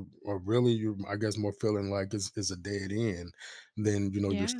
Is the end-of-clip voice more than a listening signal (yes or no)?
no